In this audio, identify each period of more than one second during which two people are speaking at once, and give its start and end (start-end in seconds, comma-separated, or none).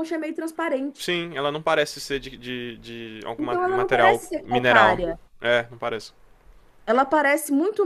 3.4-5.0